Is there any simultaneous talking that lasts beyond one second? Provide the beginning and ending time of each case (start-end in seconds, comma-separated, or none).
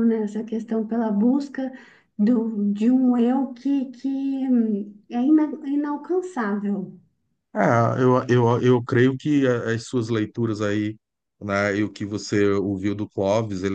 none